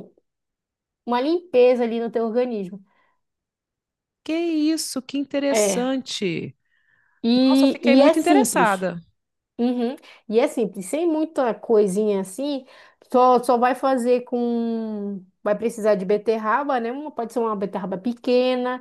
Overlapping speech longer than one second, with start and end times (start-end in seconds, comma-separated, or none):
7.5-8.9